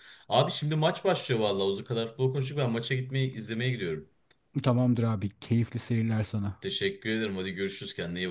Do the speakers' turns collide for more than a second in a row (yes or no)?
no